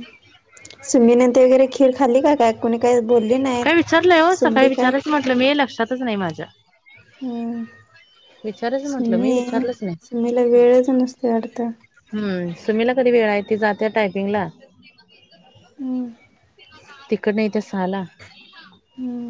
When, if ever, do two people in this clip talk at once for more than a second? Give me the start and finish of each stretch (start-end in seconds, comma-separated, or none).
none